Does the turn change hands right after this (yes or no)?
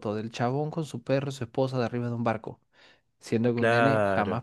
no